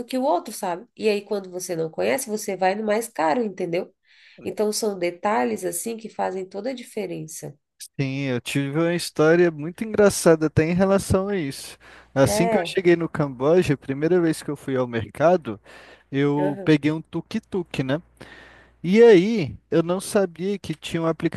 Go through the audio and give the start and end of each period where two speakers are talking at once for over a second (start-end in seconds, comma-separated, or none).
none